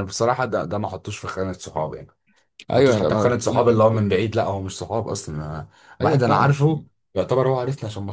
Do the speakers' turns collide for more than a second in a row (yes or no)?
yes